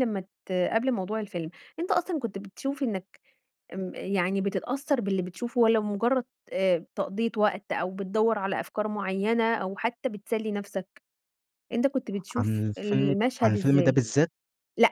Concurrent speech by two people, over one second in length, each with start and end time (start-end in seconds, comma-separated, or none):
12.4-14.0